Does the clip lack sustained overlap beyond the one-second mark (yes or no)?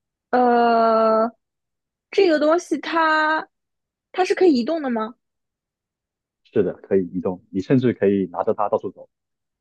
yes